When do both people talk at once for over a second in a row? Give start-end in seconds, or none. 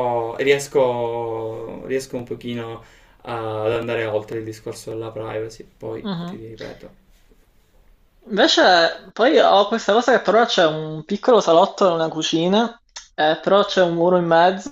none